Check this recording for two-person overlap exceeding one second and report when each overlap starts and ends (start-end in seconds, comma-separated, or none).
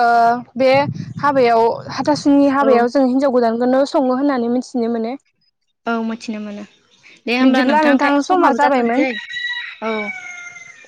7.4-9.0